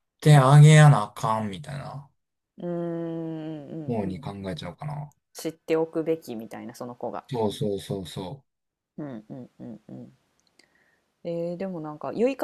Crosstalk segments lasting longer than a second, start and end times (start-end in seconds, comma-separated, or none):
none